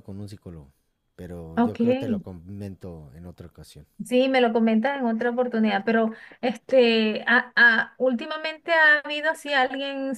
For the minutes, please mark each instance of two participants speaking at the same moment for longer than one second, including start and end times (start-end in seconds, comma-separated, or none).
none